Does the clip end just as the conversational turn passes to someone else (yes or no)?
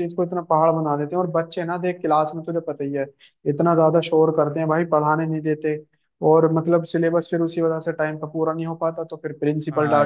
yes